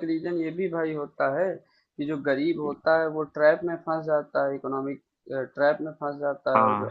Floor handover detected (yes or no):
no